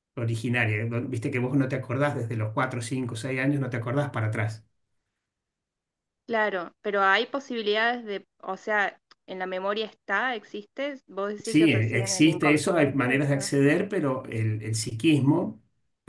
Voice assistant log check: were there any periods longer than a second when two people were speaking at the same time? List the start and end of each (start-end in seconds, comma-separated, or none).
11.4-13.5